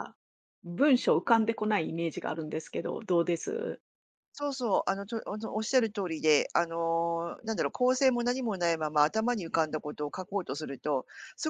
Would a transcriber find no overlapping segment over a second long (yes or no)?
yes